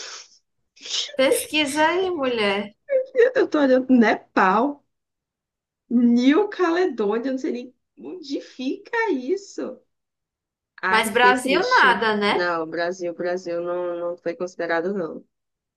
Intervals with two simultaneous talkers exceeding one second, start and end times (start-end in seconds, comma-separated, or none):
10.9-12.5